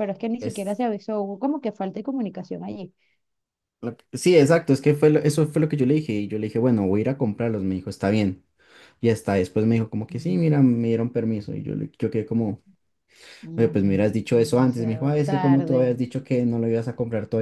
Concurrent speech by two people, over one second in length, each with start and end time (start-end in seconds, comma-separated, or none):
13.6-16.0